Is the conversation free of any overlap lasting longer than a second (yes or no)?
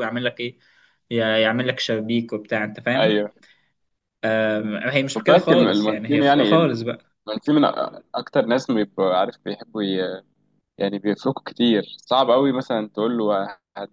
no